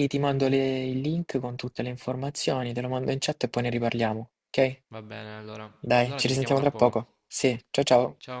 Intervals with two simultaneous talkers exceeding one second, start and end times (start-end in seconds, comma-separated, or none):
5.8-7.2